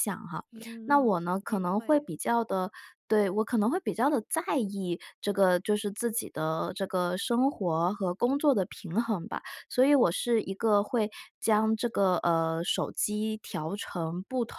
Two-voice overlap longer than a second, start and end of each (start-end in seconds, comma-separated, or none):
0.8-2.0